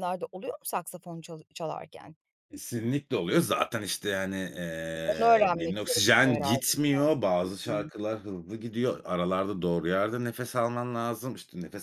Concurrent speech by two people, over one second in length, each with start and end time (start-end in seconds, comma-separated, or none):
5.0-7.1